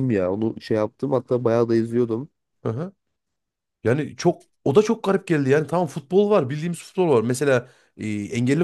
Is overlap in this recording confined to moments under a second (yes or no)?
yes